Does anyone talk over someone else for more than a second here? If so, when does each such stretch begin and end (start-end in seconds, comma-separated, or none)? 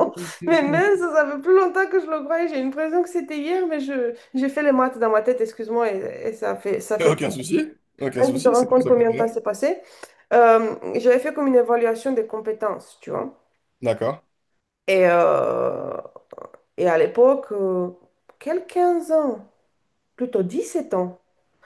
8.1-9.4